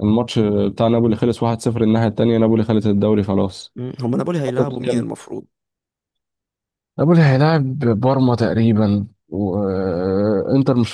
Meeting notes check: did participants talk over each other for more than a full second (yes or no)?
no